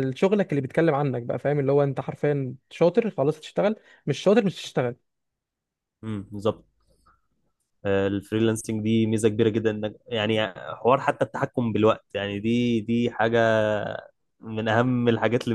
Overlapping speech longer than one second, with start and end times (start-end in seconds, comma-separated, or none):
none